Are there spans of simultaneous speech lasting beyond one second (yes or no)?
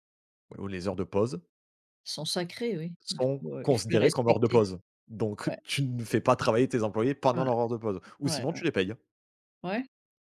yes